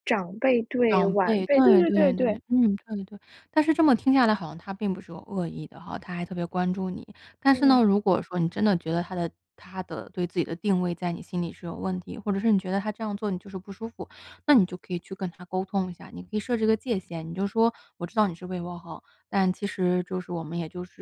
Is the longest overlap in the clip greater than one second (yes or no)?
yes